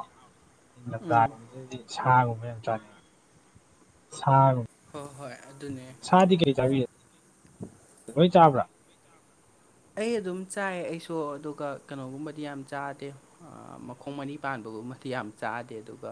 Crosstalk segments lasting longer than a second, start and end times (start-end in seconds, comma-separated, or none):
none